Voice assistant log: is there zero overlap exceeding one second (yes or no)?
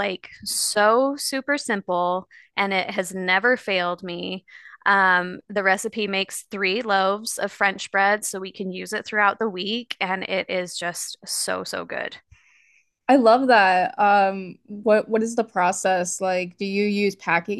yes